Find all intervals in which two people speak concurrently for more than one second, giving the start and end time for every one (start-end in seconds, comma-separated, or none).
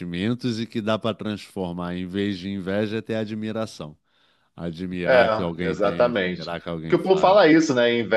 5.0-7.4